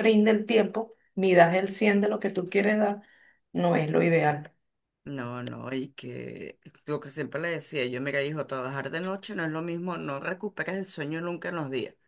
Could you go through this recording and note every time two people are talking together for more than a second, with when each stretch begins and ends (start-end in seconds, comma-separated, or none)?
none